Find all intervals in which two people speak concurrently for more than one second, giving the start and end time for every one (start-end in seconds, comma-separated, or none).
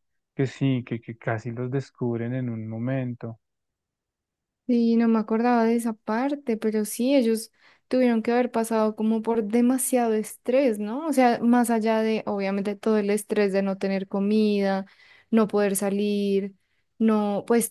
none